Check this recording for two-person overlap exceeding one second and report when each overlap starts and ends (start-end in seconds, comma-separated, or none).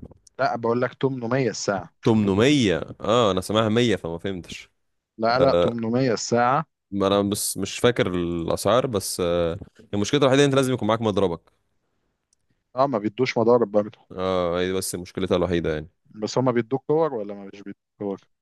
none